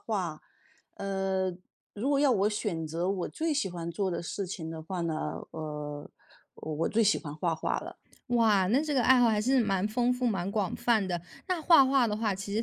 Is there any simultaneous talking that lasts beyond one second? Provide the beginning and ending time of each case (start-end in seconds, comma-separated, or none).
none